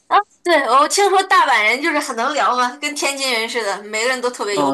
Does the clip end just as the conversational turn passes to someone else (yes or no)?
yes